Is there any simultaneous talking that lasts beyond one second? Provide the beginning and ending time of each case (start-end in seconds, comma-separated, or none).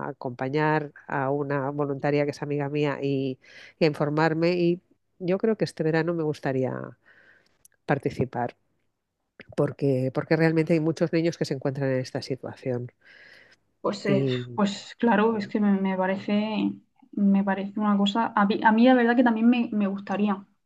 none